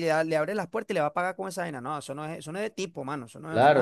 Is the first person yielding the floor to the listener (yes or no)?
yes